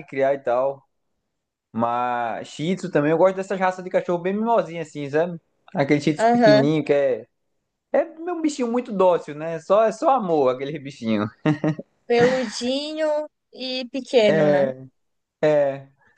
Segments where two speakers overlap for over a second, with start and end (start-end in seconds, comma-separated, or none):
none